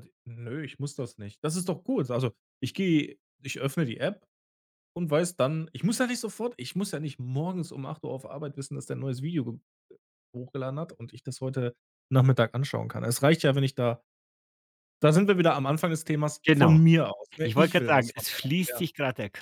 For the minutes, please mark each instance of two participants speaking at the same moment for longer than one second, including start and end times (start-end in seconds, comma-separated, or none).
17.4-18.9